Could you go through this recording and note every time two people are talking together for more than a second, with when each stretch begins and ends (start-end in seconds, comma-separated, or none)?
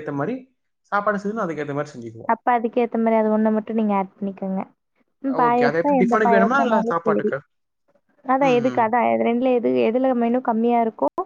5.5-7.3